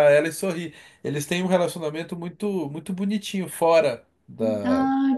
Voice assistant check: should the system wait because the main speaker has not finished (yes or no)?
no